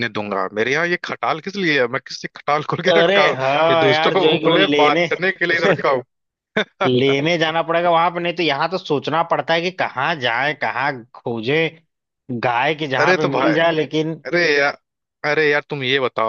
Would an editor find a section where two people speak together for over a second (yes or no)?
yes